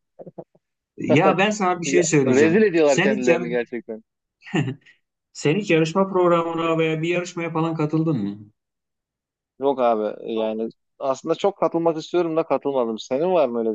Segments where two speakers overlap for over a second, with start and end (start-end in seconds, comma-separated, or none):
1.8-3.4